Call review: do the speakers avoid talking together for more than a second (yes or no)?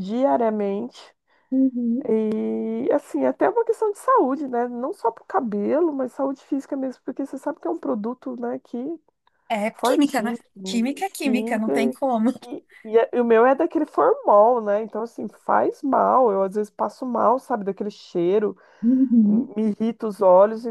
no